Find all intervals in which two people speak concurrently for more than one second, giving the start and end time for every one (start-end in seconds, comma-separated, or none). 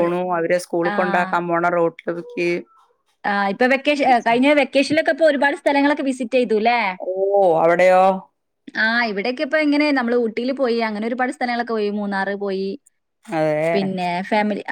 none